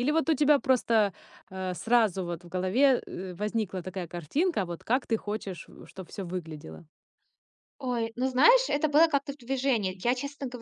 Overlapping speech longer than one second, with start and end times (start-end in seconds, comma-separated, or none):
none